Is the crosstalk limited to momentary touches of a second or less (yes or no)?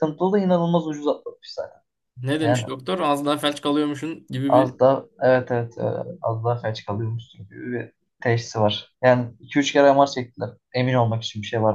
yes